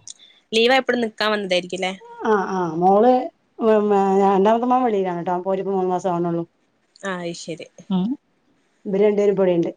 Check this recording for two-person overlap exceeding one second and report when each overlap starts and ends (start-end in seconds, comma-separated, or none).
none